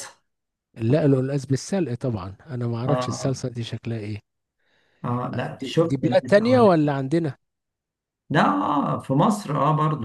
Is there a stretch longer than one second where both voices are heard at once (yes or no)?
yes